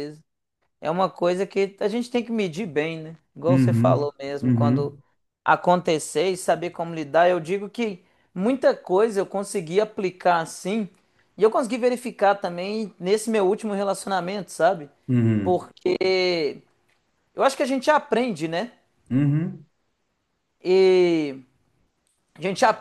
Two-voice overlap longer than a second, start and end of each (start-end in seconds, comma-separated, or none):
3.5-5.0